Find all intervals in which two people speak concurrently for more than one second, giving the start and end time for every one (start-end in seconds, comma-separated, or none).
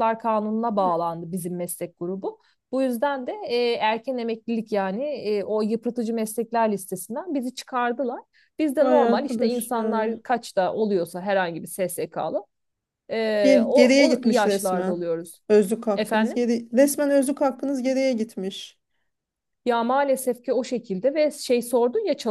8.8-10.1, 13.4-15.0